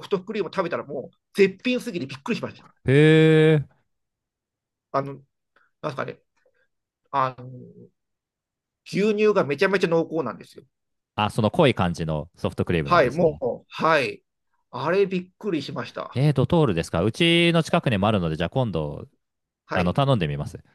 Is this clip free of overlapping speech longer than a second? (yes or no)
yes